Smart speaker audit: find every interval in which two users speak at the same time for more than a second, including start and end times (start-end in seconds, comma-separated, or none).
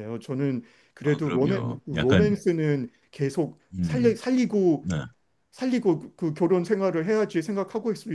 1.0-2.4